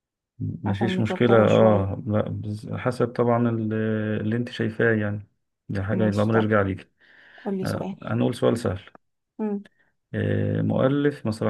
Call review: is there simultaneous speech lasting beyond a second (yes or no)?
yes